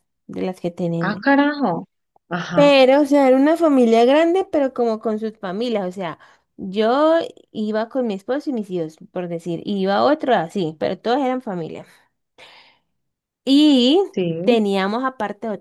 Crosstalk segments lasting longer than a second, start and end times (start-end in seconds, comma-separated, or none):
none